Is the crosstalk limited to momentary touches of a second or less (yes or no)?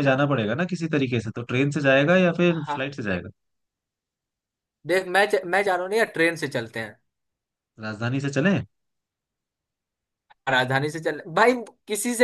yes